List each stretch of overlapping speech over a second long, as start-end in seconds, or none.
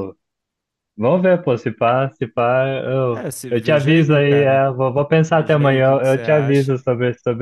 3.1-4.6, 5.3-6.8